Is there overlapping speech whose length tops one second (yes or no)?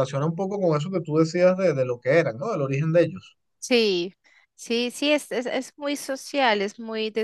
no